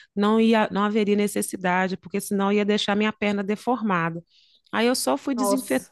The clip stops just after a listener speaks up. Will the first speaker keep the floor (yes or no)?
yes